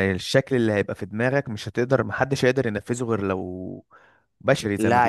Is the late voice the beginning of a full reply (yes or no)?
yes